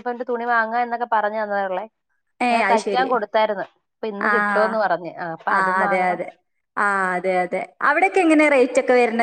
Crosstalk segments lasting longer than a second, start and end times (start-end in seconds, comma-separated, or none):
none